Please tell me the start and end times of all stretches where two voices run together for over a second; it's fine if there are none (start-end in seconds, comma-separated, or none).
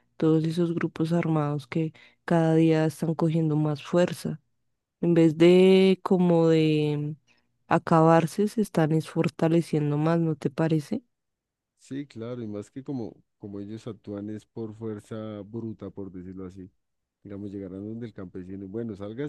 none